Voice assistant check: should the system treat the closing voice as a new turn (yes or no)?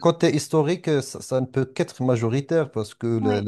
no